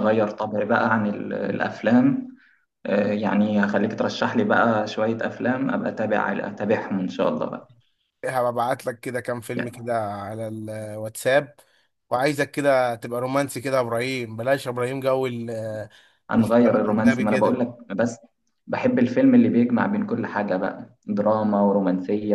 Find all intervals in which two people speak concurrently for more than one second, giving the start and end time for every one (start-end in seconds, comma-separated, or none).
16.4-17.6